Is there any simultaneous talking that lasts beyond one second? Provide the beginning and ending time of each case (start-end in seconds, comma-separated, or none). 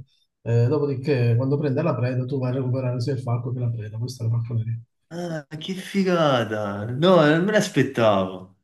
none